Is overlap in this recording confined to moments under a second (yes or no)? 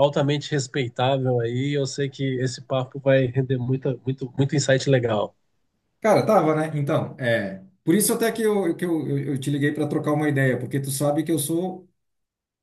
yes